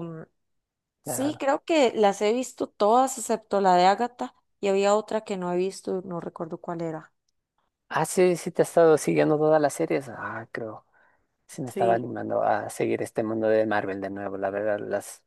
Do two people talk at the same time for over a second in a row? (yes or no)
no